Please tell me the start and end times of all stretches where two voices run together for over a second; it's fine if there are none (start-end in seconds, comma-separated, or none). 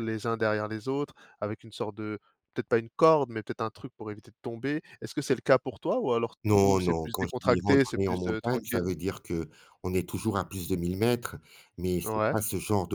6.4-8.9